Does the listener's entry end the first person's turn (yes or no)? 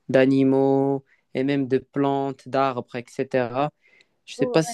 no